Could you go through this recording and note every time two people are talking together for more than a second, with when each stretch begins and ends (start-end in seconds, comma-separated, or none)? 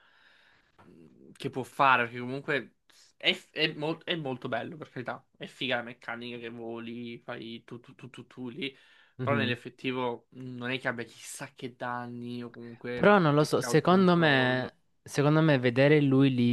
12.9-14.7